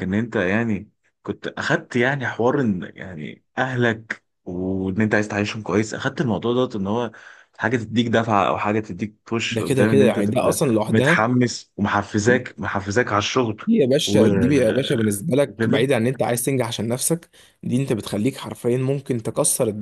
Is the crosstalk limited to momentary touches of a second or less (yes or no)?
no